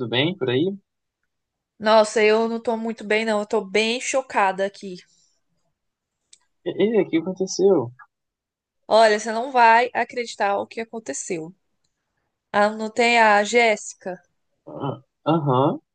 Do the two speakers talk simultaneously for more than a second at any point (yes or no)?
no